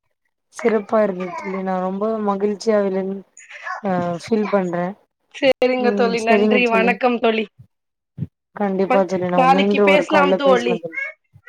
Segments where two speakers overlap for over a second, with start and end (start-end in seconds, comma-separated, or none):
8.9-10.8